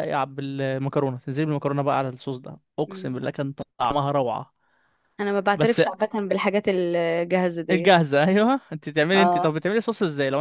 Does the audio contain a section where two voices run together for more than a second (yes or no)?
no